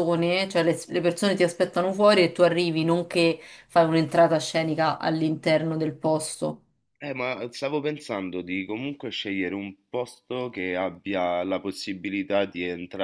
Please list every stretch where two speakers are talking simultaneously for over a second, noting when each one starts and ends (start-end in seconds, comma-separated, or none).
none